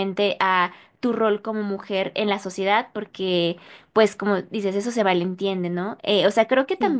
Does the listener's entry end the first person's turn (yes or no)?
no